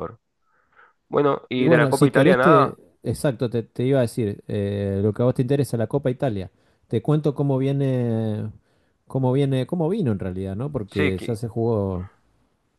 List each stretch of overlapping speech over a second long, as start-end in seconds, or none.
1.5-2.8